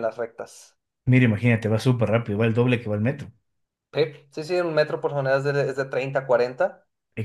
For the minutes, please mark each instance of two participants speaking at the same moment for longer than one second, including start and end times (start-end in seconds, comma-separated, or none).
none